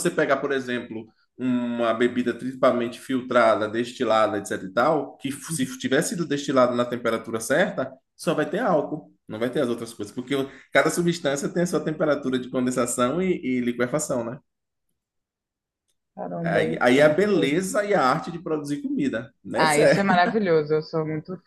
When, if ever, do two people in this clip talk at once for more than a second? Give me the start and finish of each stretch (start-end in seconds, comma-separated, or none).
16.4-17.7